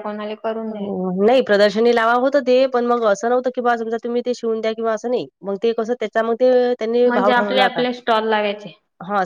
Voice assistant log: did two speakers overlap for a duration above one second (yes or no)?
no